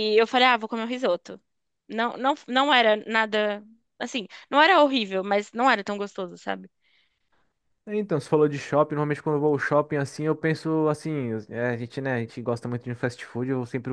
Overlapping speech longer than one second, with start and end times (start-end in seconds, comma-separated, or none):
none